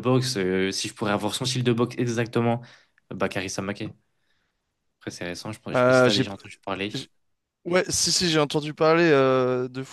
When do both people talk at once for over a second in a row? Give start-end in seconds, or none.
none